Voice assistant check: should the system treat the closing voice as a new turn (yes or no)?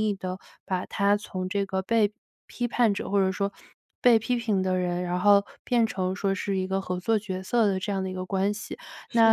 no